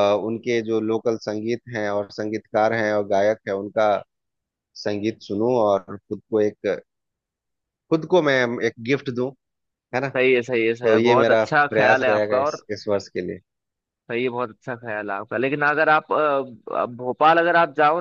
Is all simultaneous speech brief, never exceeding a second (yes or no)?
no